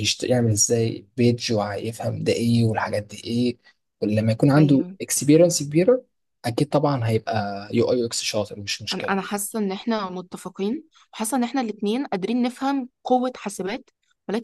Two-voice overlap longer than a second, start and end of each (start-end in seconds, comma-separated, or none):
none